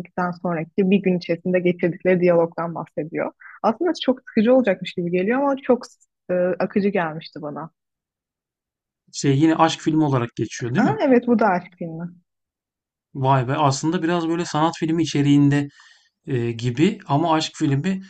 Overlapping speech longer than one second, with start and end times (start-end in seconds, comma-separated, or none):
none